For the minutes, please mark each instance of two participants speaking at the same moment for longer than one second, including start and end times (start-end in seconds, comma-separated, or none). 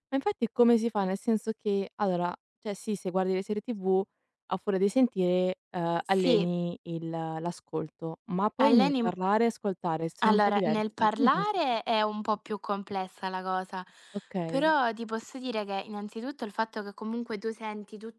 10.2-11.8